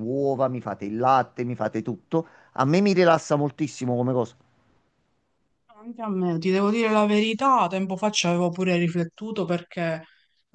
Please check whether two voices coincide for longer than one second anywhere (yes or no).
no